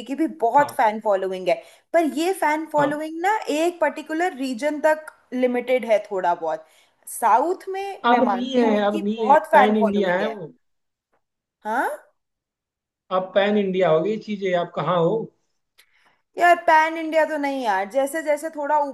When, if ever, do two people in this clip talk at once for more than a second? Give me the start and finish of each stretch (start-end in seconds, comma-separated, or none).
8.0-10.4